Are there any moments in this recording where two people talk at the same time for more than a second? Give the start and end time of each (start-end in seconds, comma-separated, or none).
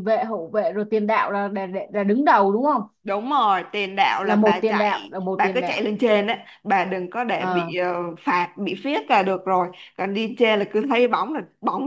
4.2-5.9